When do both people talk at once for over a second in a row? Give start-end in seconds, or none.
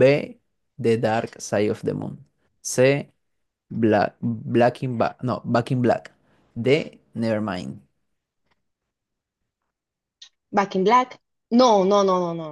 none